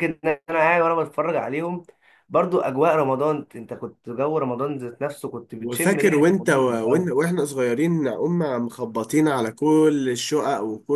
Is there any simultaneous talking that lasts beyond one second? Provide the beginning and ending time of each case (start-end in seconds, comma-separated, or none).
5.6-7.1